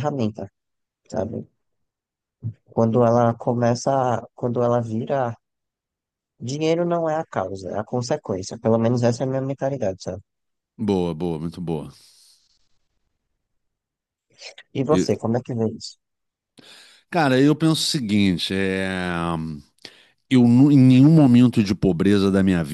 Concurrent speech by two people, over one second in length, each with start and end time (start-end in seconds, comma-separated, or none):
none